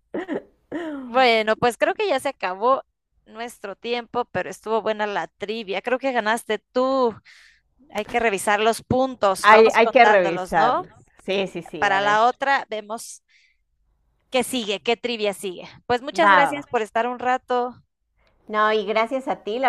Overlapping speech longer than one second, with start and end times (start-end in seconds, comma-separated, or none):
9.4-10.8